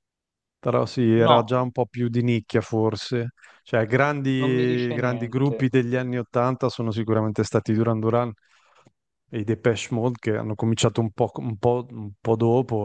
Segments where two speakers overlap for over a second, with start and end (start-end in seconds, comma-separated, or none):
4.4-5.7